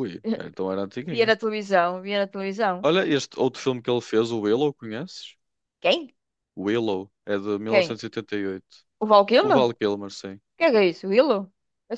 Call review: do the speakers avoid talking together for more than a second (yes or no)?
yes